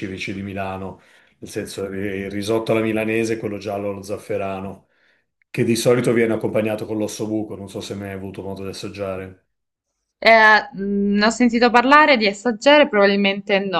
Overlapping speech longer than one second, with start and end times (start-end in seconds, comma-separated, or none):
none